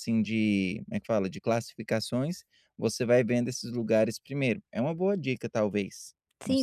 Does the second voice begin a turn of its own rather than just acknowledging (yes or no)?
yes